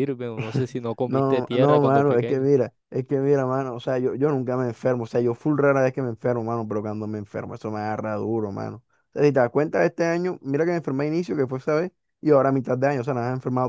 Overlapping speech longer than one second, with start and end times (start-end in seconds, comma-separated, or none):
1.1-2.5